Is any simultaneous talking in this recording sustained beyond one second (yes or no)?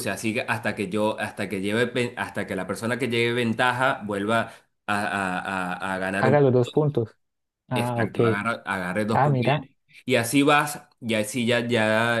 no